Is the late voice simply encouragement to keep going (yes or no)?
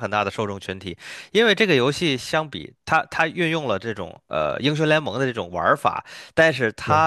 yes